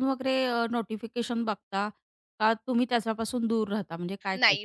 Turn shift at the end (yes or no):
yes